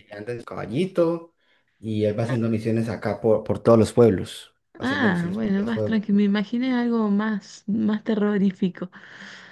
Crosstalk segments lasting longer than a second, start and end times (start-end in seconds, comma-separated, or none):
4.8-6.0